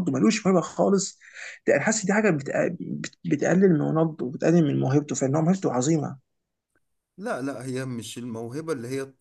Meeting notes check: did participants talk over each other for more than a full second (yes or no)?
no